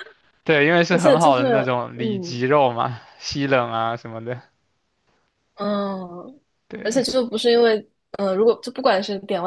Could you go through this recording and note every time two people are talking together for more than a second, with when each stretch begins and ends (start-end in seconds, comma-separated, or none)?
0.9-2.4